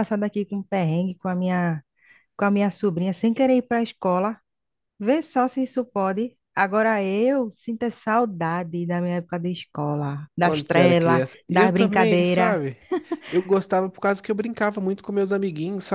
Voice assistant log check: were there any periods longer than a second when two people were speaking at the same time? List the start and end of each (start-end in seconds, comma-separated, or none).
10.4-12.6